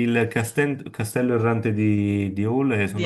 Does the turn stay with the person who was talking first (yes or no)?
yes